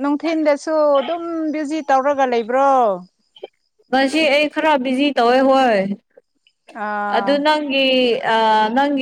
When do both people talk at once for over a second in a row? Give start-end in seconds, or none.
none